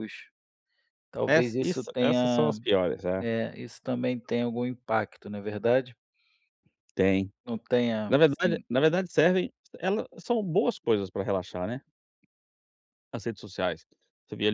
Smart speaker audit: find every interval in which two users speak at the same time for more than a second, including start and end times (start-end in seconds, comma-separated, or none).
1.3-2.6